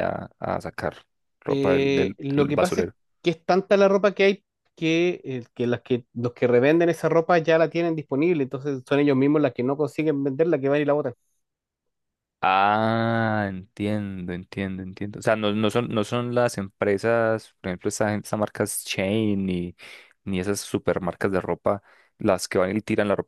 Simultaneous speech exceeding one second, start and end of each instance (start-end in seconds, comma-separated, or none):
1.5-2.9